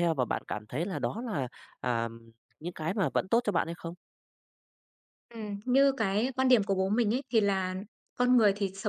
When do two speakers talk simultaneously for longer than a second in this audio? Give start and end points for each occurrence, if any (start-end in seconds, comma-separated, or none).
none